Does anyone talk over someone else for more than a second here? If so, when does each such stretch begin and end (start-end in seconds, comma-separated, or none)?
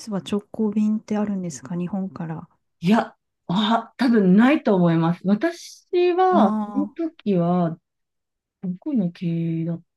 none